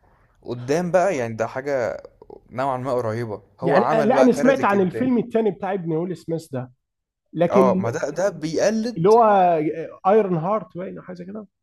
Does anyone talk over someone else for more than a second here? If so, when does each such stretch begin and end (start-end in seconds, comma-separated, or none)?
3.6-5.1